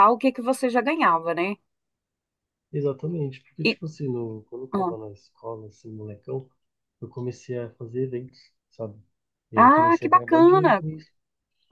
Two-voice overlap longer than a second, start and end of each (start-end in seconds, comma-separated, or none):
9.6-10.8